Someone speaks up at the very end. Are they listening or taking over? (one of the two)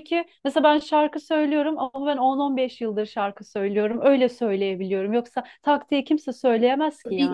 taking over